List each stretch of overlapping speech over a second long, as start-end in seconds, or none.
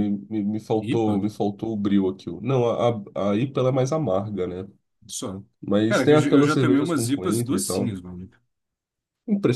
5.9-8.0